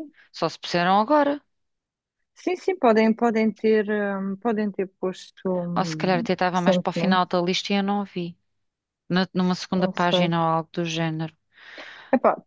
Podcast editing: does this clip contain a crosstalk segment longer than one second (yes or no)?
yes